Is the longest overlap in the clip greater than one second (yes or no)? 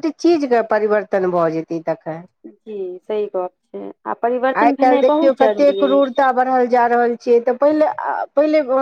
no